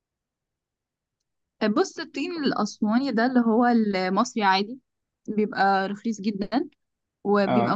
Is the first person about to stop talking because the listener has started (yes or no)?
no